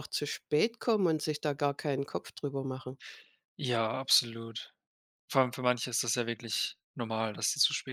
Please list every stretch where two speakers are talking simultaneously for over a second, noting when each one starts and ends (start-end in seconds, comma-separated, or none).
none